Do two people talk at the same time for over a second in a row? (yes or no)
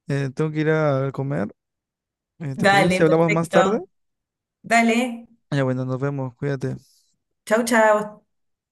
yes